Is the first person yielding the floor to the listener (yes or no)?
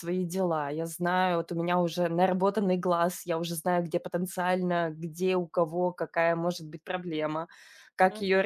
yes